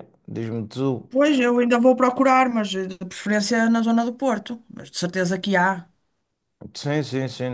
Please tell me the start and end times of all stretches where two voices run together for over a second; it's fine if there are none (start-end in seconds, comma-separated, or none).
none